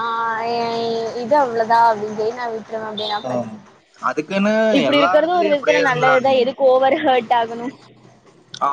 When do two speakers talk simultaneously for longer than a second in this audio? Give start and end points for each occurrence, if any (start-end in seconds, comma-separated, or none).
4.9-6.4